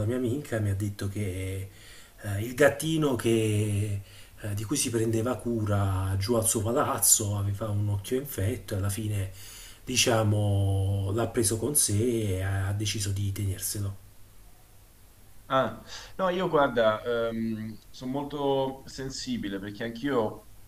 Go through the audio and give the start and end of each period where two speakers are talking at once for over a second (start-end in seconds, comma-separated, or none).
none